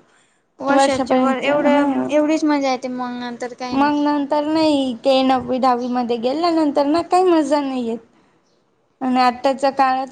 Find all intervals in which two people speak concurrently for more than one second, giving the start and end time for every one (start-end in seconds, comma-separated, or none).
0.8-2.1